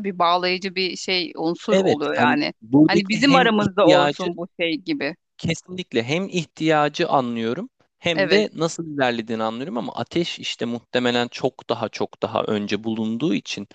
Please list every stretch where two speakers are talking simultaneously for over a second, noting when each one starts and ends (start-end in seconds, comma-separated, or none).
1.7-4.3